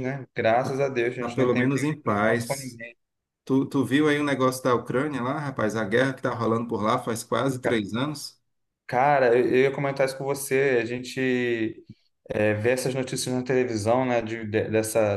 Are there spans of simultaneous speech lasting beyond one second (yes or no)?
yes